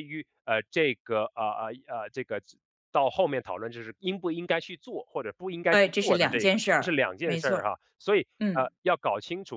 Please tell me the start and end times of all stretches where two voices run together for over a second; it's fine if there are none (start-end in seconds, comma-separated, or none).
5.7-7.7